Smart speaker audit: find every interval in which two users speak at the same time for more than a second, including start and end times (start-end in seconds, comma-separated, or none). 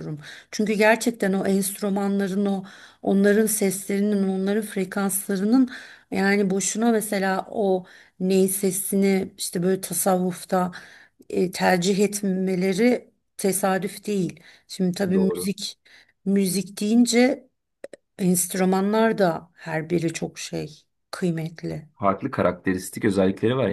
none